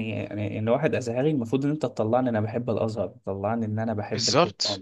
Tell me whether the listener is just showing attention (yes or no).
yes